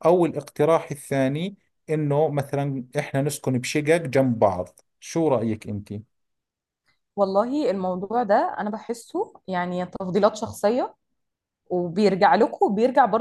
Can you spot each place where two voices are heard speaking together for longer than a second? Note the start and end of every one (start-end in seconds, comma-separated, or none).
none